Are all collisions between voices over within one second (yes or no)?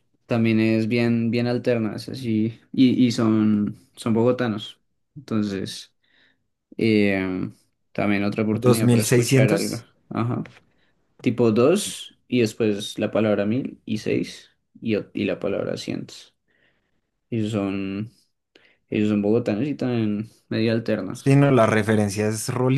no